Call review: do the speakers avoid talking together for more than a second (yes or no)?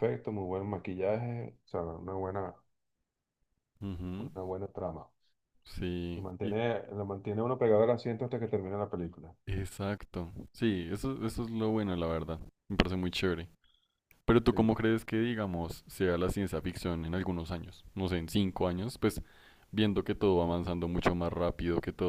yes